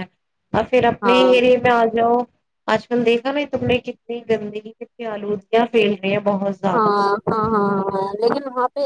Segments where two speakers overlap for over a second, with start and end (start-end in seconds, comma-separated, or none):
none